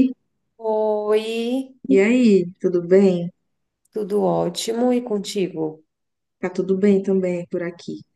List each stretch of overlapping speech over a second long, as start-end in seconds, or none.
none